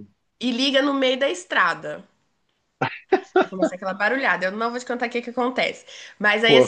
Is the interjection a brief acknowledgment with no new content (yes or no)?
yes